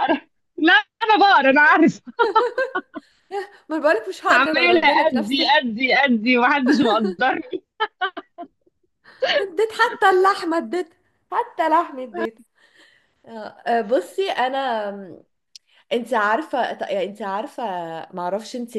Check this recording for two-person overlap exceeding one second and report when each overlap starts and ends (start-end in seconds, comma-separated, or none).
4.3-5.5